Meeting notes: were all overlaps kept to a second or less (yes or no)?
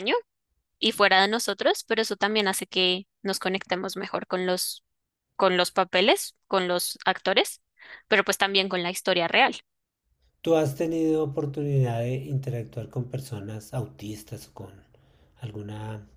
yes